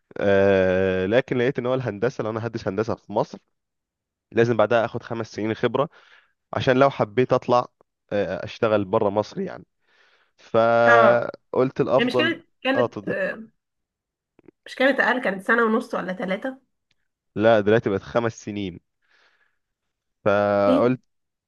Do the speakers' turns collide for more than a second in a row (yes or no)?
yes